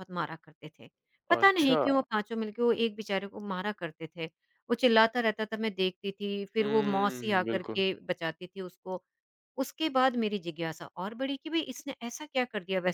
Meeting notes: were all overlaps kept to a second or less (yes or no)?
no